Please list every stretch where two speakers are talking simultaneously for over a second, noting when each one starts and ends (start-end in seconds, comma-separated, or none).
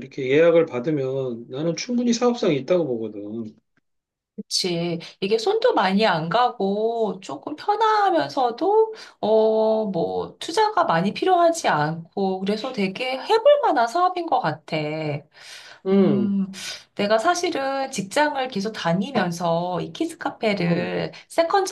none